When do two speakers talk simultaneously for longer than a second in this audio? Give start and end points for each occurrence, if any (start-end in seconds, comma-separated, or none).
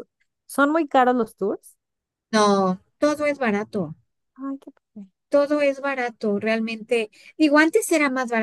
none